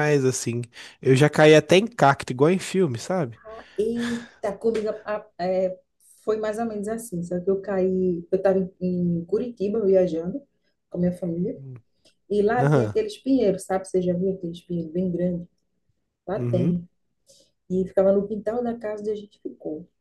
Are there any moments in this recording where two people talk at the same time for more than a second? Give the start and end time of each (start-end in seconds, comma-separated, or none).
none